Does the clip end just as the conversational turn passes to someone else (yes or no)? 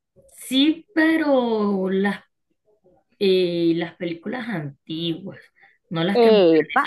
yes